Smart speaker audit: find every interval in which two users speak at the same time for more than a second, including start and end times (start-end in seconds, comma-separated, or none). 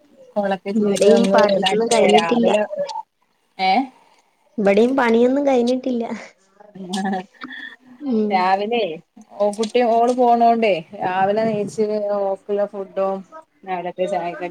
0.8-2.5